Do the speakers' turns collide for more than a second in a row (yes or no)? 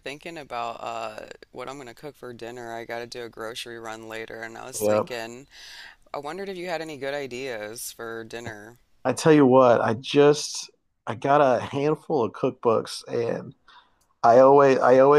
no